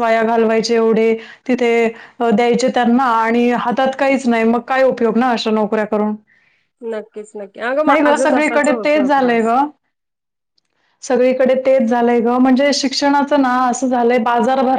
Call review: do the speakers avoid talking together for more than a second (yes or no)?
no